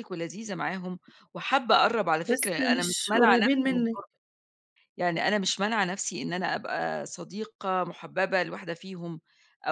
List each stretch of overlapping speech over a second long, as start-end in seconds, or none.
2.3-3.9